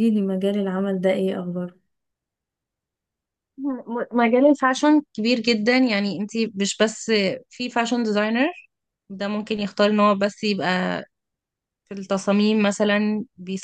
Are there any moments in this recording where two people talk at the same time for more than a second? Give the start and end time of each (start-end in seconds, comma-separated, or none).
none